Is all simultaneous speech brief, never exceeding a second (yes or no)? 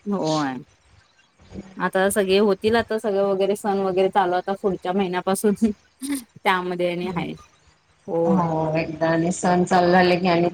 yes